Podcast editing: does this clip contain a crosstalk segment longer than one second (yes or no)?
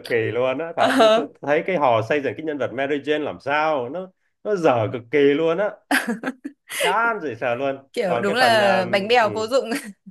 yes